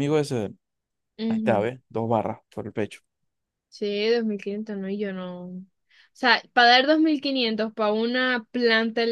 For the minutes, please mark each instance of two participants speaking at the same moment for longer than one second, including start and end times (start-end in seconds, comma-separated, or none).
none